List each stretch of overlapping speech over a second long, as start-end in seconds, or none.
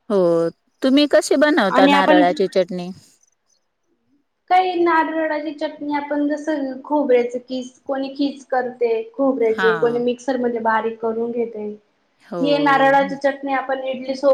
none